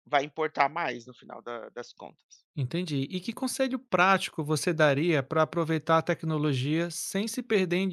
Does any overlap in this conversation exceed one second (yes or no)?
no